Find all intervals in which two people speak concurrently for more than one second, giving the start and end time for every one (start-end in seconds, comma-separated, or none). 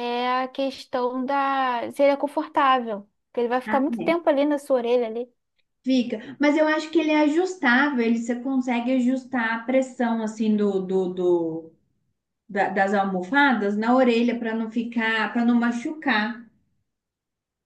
none